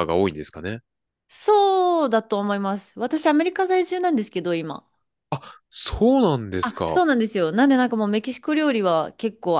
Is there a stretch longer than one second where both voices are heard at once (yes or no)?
no